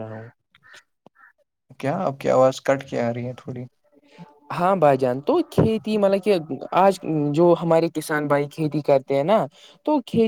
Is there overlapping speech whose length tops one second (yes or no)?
no